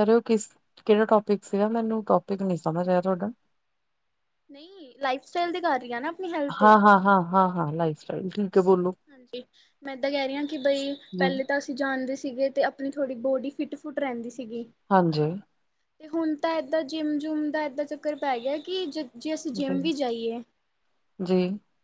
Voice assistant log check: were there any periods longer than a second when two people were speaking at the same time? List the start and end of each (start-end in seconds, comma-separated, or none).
none